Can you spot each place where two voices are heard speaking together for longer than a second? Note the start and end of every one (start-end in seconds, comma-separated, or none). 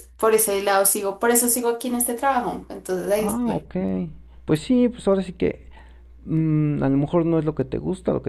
none